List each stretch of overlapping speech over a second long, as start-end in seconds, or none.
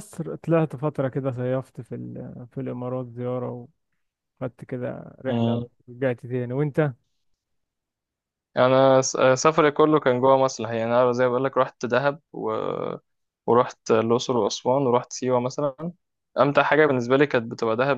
none